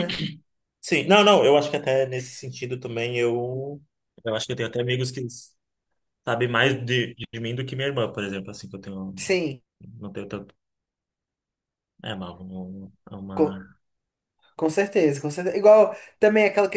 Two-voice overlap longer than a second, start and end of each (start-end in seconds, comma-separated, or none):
none